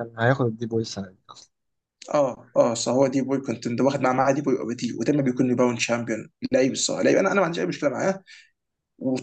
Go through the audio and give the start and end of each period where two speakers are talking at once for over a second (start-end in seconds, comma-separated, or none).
none